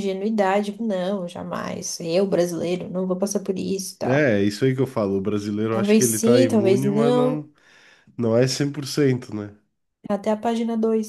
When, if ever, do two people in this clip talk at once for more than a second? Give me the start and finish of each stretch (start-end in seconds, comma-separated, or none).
5.7-7.5